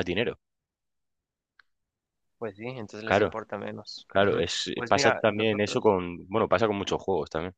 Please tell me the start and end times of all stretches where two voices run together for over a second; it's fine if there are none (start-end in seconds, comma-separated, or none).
4.1-5.9